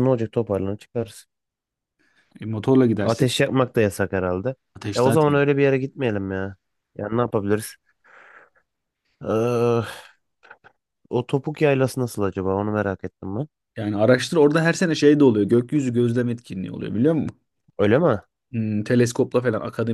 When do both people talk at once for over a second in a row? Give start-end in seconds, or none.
none